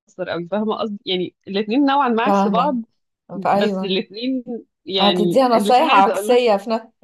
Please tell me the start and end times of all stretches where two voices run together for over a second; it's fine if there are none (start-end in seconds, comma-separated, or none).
5.0-6.4